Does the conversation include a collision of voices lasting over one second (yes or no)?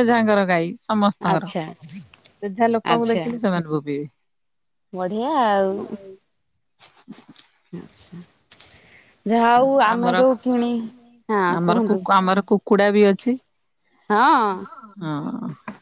no